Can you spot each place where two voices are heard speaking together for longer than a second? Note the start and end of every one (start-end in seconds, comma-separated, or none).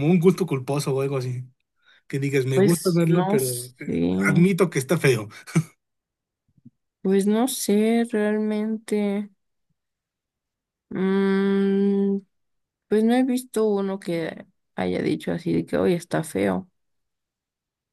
2.5-3.7